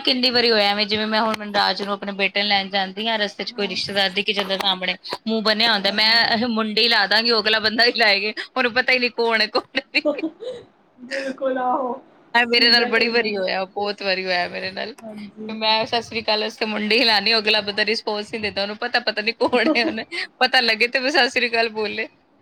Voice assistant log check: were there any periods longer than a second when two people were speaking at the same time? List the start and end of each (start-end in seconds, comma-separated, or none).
none